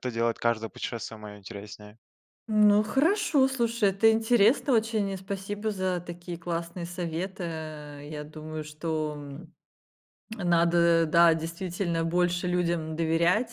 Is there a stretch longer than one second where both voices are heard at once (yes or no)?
no